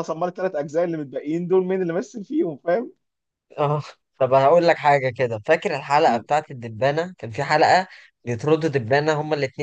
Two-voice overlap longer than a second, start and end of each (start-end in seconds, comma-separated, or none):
none